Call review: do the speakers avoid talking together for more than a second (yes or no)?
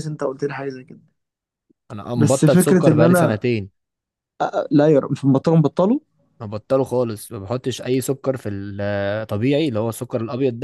no